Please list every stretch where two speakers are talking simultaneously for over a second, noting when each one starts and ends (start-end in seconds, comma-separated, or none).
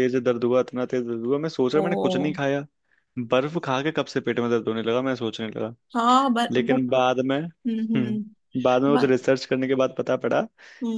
none